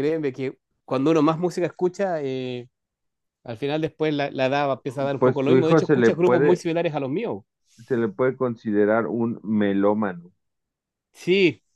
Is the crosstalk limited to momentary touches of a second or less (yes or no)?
no